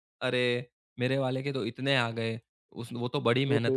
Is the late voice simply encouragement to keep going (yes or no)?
yes